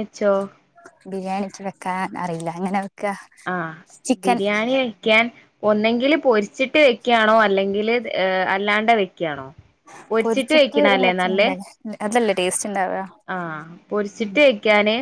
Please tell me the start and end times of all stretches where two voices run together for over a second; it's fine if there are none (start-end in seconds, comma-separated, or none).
none